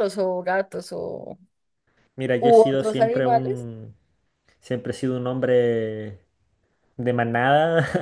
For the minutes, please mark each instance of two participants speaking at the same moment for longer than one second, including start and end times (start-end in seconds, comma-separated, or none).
2.4-3.6